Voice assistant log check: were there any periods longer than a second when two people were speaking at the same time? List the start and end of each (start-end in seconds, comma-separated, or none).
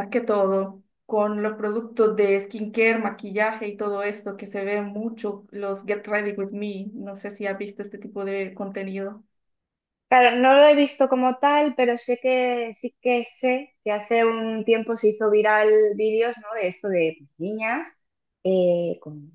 none